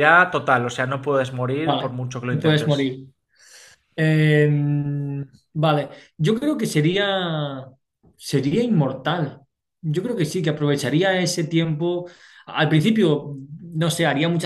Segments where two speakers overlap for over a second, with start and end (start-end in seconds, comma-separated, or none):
1.6-3.0